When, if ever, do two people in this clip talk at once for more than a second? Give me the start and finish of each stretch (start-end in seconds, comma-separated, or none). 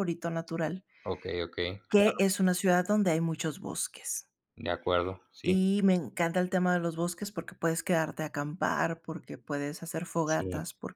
none